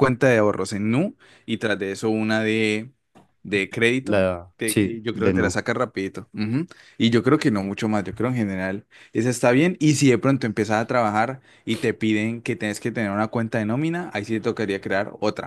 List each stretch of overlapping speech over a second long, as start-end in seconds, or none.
4.0-5.6